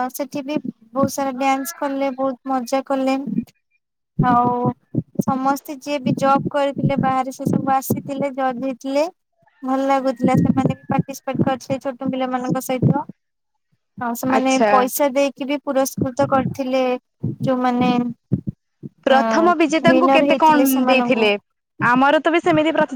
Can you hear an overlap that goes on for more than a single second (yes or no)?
yes